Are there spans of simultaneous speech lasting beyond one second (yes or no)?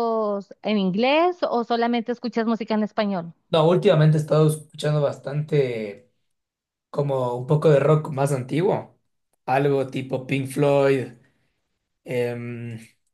no